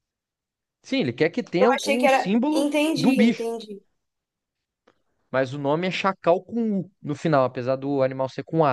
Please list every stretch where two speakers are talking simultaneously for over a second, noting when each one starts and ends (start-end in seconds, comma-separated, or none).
1.6-3.5